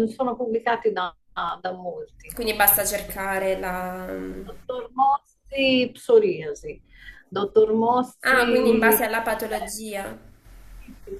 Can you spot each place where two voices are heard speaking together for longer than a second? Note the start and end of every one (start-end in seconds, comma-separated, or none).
8.2-9.7